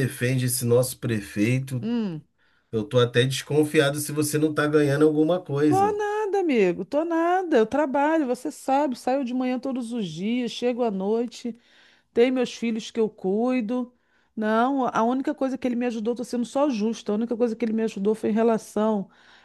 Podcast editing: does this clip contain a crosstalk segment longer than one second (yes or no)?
no